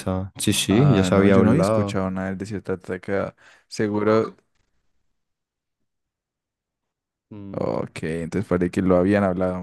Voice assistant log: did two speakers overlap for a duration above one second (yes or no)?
yes